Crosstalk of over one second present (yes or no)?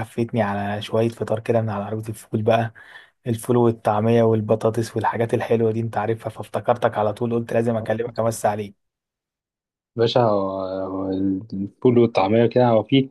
no